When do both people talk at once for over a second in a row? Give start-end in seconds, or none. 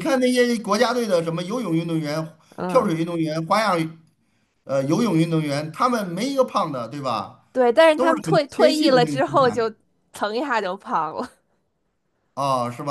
8.0-9.6